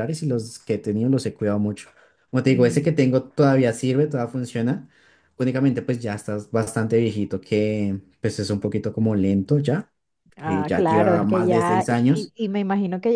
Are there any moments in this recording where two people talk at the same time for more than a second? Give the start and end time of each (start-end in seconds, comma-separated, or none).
10.4-12.3